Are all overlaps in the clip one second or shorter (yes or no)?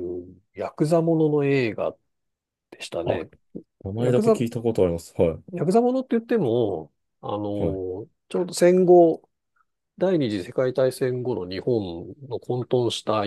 yes